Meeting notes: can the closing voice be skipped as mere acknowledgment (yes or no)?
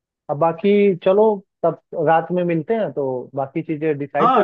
no